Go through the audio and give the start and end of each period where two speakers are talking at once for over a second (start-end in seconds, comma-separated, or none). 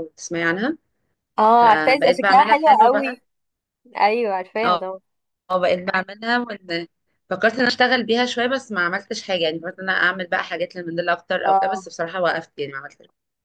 1.6-3.2